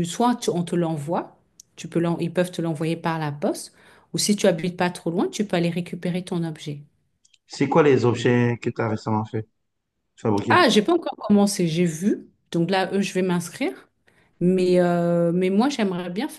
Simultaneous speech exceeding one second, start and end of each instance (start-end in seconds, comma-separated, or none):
none